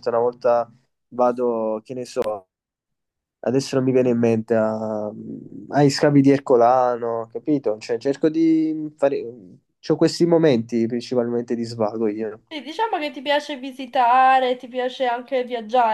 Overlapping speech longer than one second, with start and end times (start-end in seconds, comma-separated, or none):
none